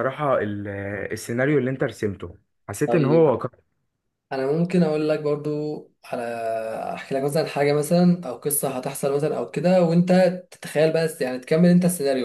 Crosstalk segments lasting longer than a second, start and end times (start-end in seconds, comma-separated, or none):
none